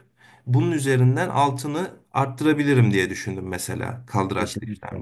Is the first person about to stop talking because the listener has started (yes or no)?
yes